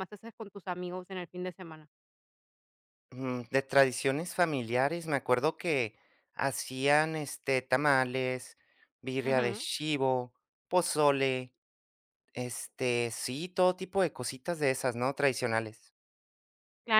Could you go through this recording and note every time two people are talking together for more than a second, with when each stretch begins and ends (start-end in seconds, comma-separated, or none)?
none